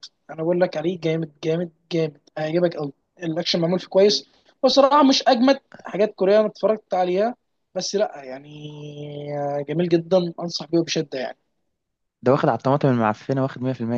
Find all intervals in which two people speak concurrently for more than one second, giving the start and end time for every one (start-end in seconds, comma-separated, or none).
none